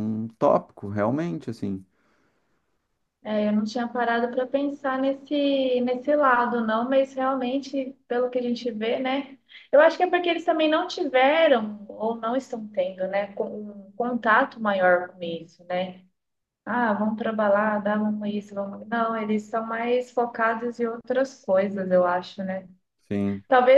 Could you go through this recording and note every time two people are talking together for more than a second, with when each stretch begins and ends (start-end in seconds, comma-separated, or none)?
none